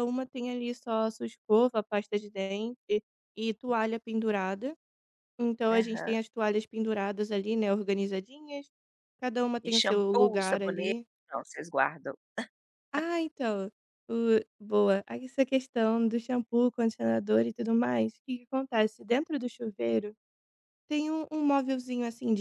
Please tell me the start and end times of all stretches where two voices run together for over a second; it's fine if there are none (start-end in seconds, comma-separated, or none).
9.6-10.9